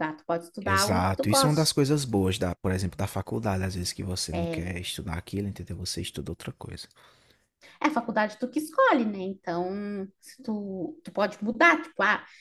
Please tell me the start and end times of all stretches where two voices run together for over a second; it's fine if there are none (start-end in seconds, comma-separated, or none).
0.6-2.0